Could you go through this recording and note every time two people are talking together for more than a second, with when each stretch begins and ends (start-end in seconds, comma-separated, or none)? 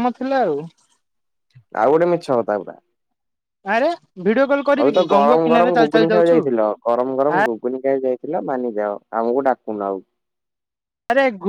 4.8-6.4